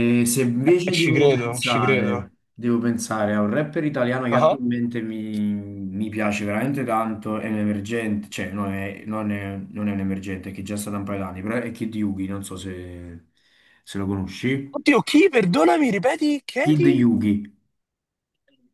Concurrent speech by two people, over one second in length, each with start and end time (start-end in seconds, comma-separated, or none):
0.9-2.3